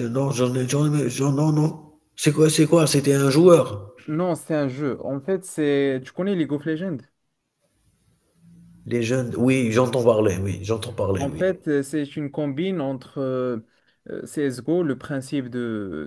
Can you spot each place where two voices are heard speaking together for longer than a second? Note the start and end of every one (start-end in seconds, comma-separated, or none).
none